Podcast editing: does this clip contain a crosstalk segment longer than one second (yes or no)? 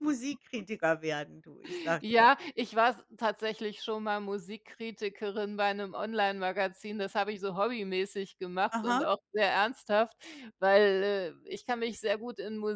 no